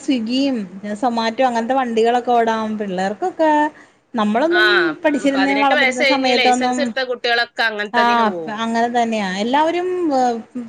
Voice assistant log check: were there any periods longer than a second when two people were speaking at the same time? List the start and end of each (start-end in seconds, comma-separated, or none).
5.3-6.8